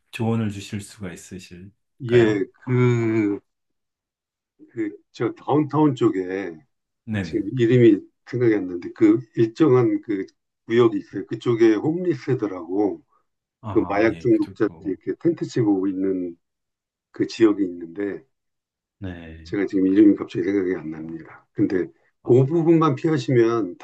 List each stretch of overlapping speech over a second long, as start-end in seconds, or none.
13.7-15.0